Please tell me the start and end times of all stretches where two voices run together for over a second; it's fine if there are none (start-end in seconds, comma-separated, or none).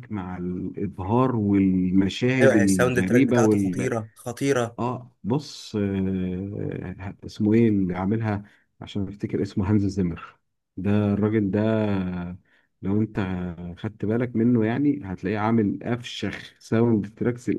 2.4-3.9